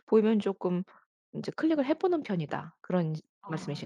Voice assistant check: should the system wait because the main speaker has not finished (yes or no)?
no